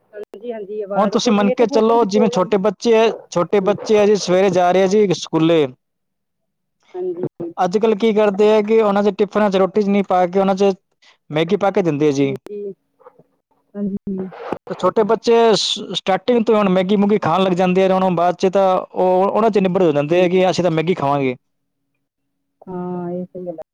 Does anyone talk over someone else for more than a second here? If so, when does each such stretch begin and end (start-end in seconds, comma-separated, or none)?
1.0-2.5